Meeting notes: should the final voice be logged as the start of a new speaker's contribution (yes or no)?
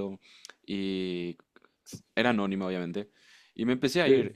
no